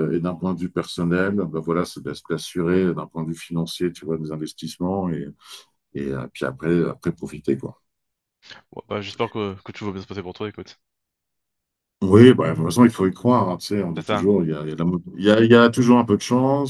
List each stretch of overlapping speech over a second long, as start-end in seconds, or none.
none